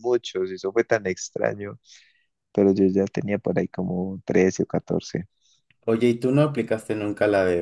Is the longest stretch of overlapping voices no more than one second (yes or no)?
yes